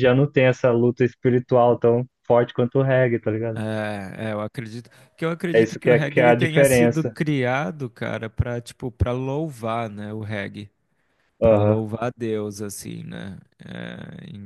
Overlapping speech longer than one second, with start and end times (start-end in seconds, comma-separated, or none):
5.5-7.2